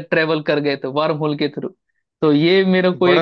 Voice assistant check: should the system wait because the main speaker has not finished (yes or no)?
yes